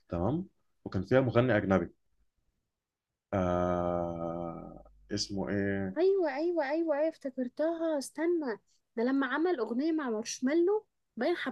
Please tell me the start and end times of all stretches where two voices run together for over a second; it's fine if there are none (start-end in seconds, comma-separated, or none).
none